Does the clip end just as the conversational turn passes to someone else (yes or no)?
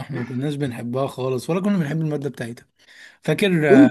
yes